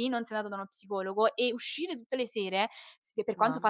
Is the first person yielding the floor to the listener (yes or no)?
no